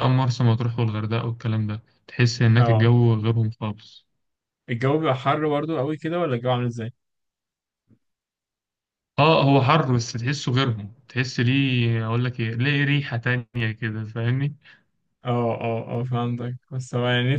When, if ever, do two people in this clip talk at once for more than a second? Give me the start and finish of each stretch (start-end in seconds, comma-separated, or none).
none